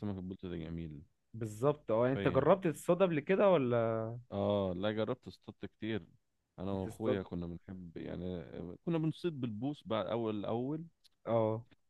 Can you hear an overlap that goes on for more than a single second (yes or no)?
no